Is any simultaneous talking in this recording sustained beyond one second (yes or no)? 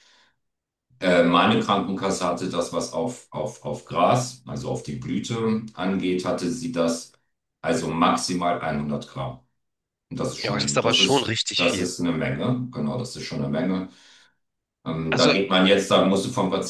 yes